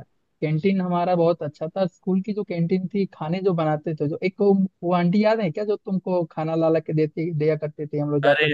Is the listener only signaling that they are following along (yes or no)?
no